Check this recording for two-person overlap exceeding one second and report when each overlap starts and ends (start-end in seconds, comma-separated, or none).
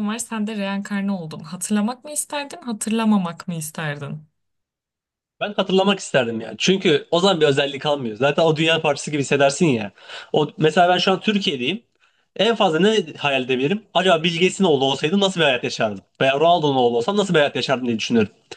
none